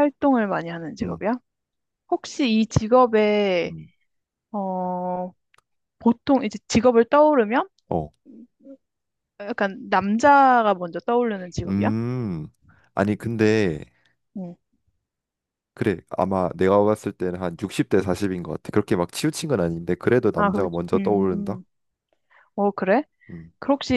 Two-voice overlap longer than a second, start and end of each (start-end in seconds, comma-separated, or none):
20.4-21.6